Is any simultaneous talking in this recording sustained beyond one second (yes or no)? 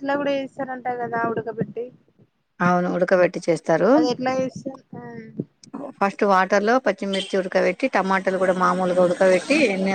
no